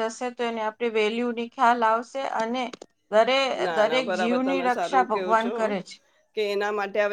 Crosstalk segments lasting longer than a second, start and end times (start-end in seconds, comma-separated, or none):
3.8-5.5